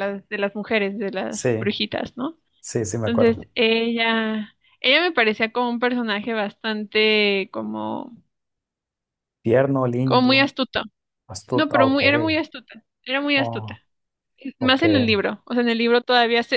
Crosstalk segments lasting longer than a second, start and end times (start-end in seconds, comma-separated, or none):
none